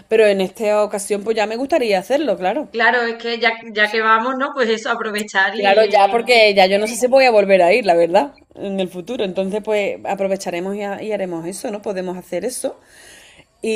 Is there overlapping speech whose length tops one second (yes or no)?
no